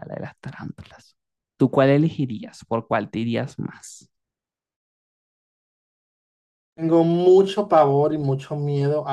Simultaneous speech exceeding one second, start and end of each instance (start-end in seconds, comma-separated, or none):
none